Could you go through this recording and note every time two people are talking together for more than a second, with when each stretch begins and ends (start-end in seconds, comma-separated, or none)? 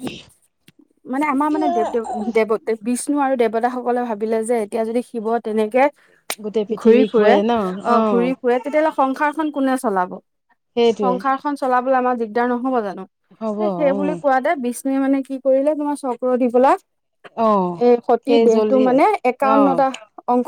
none